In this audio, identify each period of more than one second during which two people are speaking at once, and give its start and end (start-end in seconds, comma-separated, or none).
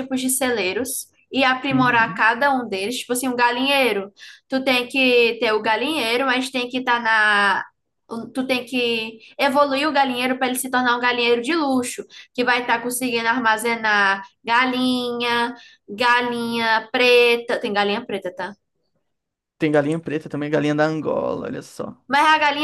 none